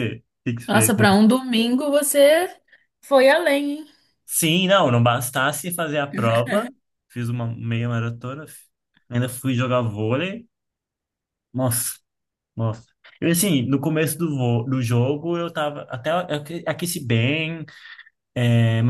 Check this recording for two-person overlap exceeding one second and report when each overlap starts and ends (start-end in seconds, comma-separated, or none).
none